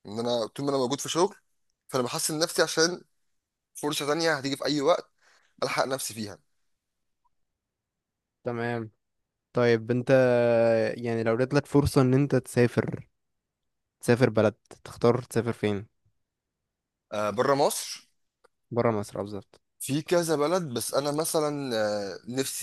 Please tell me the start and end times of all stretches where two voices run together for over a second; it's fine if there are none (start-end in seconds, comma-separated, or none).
none